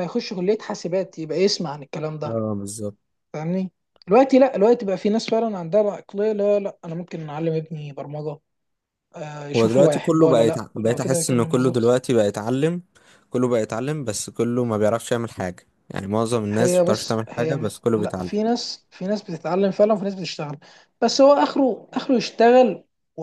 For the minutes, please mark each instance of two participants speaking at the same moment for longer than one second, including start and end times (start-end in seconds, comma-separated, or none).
9.6-11.9, 16.5-18.3